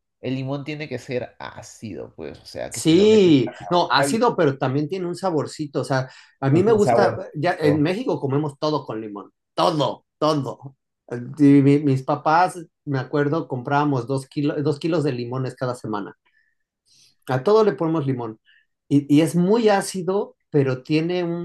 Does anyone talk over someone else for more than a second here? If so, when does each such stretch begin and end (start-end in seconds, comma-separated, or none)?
2.7-4.2, 6.5-7.9